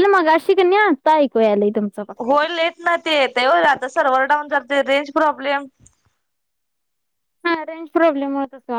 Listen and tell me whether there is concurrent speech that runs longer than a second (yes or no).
no